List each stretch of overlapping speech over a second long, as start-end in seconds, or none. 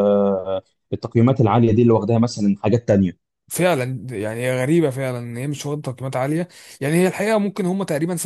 none